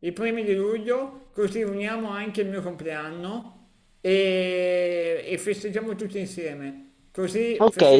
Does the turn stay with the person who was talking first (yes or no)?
no